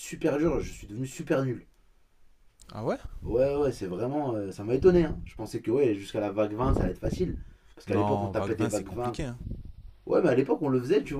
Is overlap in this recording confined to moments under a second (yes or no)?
no